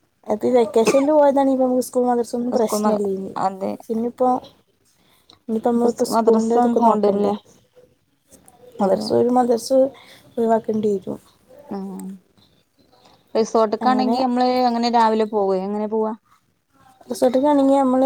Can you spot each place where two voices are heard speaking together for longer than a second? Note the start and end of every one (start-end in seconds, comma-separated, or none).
5.8-7.3